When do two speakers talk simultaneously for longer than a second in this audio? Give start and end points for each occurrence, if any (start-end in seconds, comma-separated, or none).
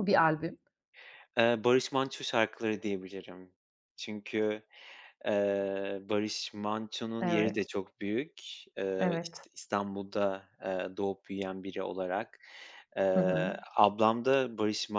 none